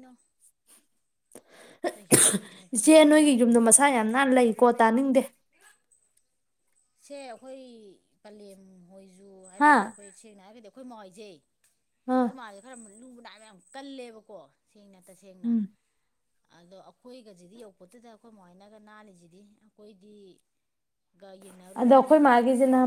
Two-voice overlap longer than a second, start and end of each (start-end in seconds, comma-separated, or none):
2.7-4.3